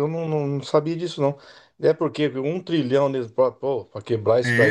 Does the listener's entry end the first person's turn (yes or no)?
yes